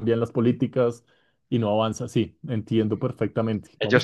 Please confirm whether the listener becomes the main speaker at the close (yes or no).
yes